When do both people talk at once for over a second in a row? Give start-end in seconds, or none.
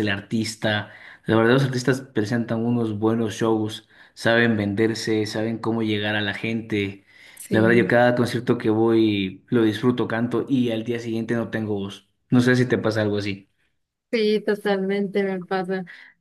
none